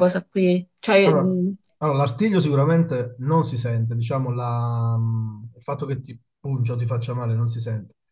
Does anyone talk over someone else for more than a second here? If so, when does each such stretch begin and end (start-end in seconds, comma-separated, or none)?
none